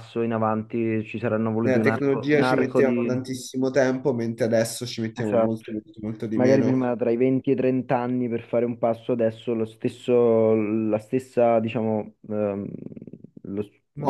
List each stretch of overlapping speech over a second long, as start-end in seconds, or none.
1.6-3.1